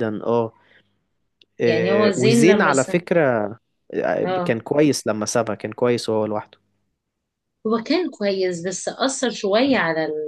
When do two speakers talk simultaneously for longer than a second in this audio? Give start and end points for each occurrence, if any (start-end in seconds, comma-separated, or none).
1.6-2.9